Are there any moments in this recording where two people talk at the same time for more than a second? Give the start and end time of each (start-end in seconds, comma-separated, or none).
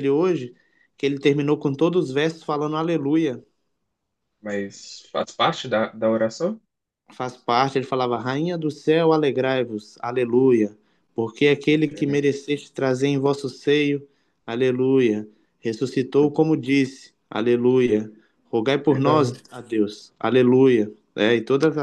none